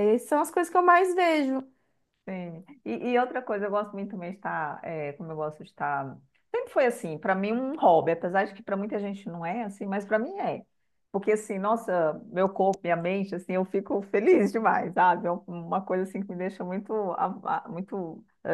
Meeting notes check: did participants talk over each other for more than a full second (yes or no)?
no